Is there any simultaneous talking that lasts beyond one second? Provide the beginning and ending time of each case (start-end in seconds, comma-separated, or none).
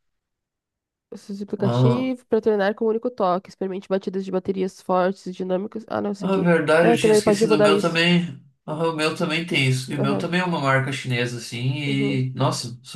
6.2-8.0